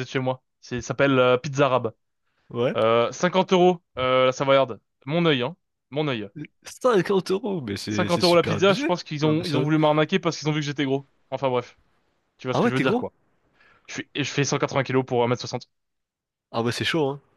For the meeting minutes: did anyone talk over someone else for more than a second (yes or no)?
yes